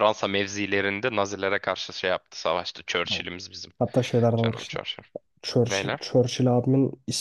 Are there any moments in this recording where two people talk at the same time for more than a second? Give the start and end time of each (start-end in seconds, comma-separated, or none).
none